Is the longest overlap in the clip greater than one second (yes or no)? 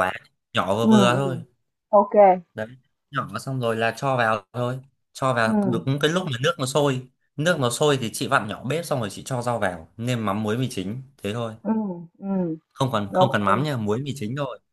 no